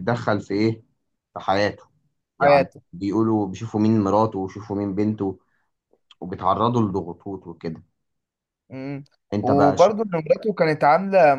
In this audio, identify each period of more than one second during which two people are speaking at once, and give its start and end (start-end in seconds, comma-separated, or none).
none